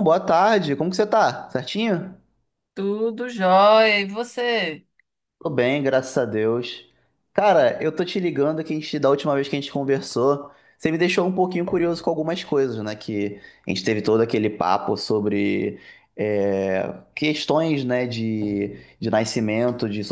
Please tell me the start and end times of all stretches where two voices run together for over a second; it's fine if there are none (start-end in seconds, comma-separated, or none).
none